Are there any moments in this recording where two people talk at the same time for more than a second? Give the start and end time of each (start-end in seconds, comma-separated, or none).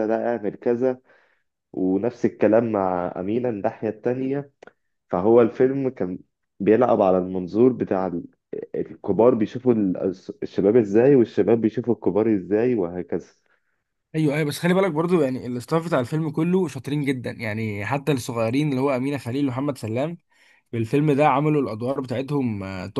none